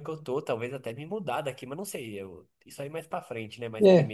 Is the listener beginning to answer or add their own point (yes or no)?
no